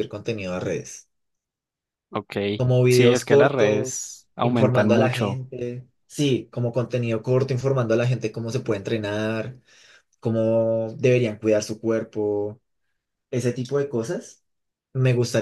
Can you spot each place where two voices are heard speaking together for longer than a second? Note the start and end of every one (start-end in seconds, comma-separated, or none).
2.9-5.4